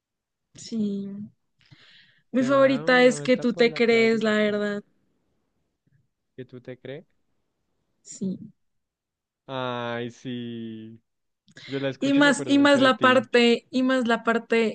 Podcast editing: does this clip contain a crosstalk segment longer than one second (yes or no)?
yes